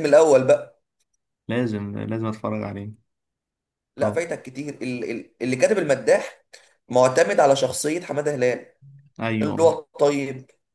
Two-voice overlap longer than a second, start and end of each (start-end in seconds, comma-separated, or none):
none